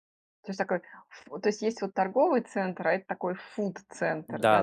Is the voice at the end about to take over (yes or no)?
yes